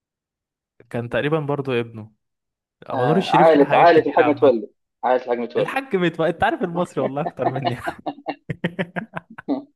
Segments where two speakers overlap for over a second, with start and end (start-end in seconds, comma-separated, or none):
2.9-4.5